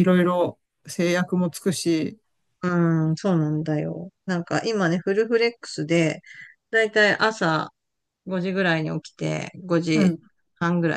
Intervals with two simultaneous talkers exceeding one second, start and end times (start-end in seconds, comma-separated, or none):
none